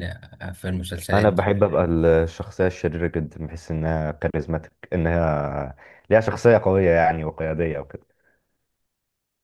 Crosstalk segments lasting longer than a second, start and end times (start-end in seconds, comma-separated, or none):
none